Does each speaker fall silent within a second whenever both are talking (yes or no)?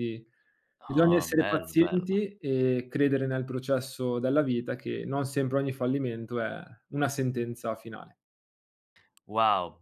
no